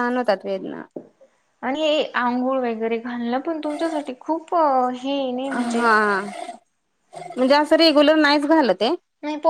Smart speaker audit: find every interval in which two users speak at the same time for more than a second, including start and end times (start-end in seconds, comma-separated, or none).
none